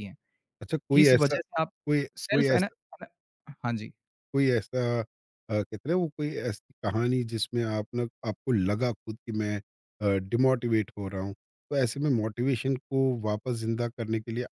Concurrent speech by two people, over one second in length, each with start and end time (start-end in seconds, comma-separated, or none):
none